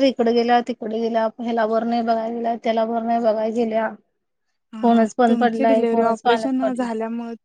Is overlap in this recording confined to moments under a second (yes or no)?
no